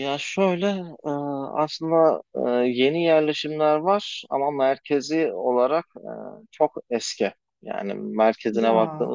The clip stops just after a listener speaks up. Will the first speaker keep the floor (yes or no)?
yes